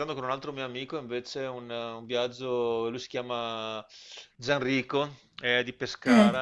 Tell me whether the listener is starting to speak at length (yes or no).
no